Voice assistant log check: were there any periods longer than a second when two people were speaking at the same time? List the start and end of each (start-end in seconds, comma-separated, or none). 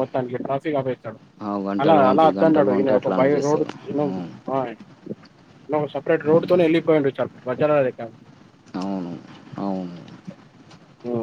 1.8-3.7